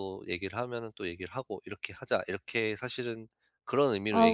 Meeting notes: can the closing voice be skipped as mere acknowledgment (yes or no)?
no